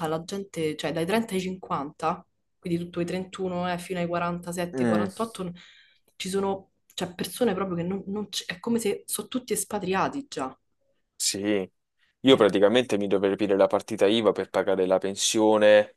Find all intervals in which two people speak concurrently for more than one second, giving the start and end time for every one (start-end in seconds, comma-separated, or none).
none